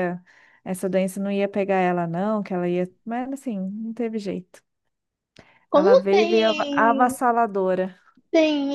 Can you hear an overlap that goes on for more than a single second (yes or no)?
yes